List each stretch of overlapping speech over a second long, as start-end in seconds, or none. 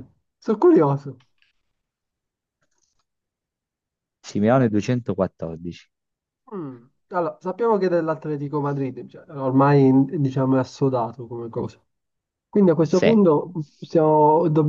none